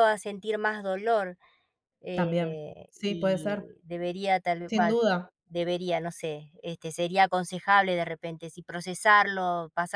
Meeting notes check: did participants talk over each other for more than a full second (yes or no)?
yes